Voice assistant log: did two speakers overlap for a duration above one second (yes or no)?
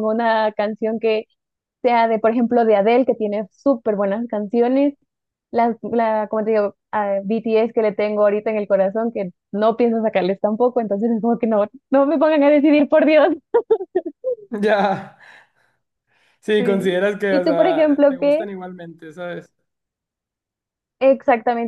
yes